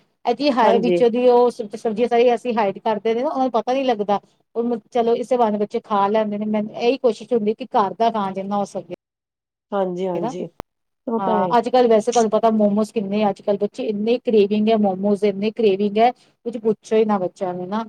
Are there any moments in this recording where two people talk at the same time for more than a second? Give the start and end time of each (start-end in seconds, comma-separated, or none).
none